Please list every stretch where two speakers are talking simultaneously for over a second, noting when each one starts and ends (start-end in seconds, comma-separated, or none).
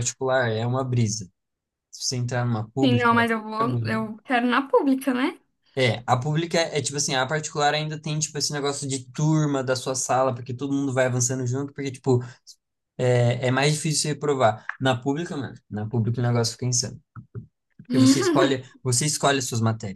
none